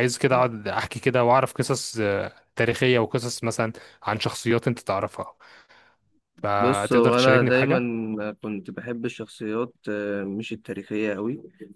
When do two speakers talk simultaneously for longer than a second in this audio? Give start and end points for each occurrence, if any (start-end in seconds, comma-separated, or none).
6.5-7.8